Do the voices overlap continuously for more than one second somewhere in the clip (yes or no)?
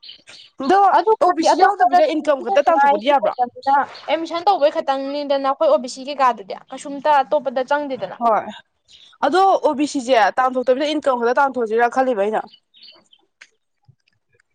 yes